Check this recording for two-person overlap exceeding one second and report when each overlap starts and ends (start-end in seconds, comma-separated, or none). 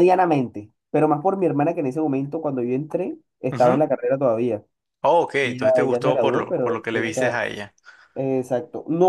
5.4-7.4